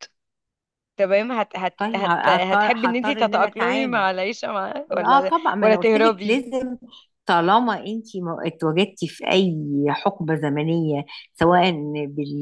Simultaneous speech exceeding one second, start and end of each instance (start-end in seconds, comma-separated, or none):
1.8-4.1, 4.9-6.4